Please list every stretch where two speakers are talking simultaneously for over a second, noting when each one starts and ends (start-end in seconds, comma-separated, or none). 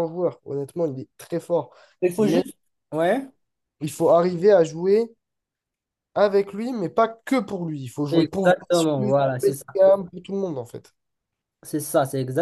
8.1-9.8